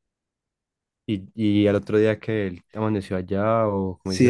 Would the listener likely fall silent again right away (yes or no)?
no